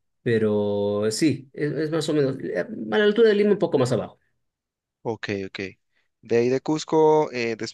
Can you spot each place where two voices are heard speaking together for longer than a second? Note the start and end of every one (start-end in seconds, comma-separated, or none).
none